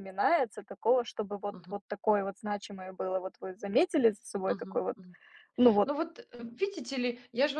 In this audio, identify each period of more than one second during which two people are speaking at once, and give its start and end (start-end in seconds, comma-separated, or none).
none